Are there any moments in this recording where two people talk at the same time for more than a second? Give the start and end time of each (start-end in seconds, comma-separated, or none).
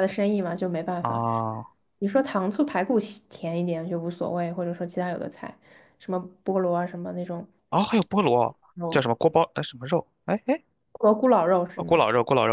none